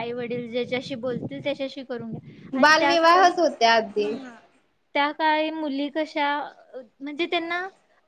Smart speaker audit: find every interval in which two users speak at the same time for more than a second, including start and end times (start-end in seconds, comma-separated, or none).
2.6-4.1